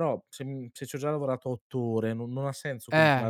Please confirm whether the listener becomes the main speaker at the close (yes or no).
no